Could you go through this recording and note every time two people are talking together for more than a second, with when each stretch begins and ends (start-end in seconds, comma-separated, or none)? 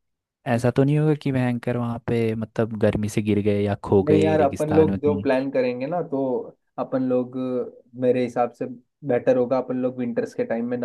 4.0-5.3